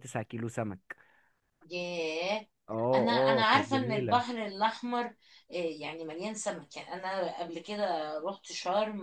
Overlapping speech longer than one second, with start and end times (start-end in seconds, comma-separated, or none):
2.9-4.2